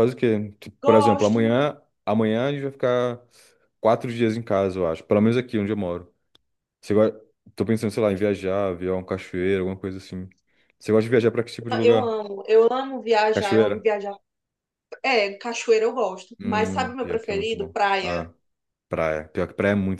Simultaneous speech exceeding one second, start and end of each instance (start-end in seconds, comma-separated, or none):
16.4-18.3